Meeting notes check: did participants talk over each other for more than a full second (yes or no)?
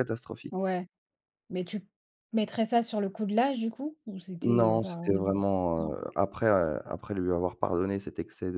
yes